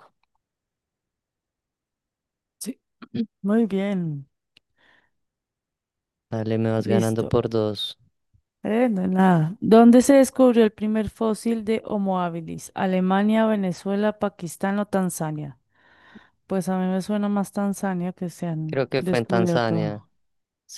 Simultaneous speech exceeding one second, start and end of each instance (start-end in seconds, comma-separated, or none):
18.6-20.0